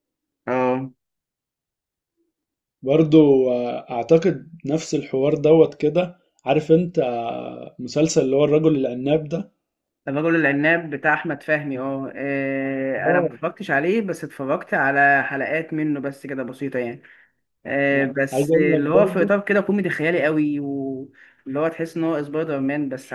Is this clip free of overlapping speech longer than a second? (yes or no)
no